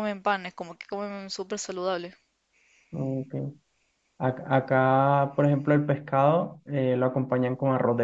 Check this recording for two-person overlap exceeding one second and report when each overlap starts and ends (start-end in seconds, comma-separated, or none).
none